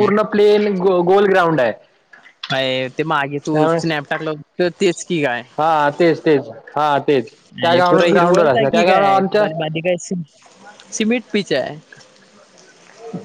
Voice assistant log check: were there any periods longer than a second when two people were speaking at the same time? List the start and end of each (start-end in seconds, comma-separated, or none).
7.5-9.5